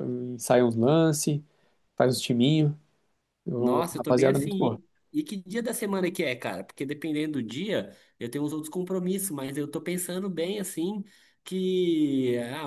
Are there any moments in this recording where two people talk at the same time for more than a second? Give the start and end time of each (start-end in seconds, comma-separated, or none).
3.6-4.8